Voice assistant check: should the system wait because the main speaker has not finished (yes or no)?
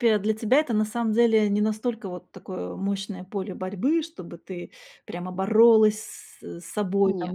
yes